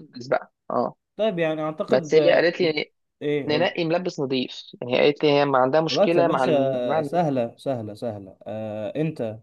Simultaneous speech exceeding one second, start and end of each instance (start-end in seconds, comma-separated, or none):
5.9-7.2